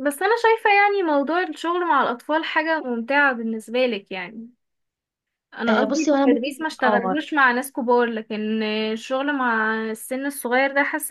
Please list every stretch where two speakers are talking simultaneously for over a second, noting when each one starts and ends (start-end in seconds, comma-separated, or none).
5.7-7.2